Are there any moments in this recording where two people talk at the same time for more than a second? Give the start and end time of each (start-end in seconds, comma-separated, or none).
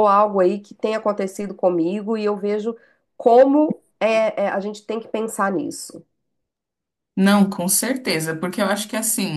none